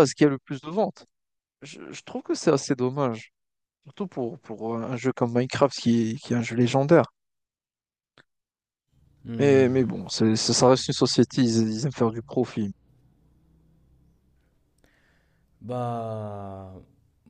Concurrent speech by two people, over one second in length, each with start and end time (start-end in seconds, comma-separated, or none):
none